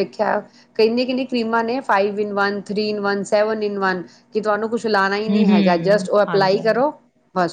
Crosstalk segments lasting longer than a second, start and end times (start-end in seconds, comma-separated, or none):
5.3-6.8